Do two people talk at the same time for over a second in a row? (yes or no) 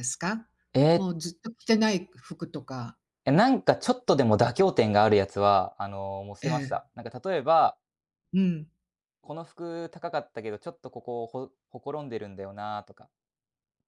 no